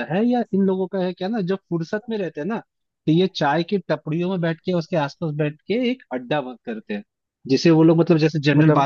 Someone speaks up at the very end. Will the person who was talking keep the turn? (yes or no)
yes